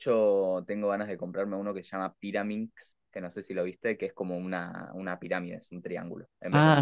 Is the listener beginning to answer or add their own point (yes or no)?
yes